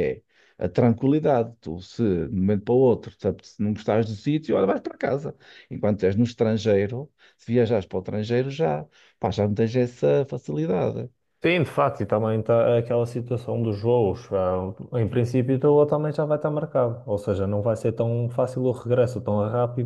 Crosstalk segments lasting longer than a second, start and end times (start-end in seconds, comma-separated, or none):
none